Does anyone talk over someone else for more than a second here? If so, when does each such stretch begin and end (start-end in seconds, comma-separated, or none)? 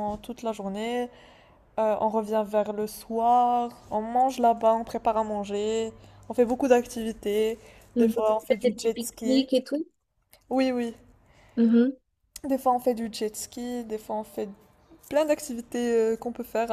8.0-9.5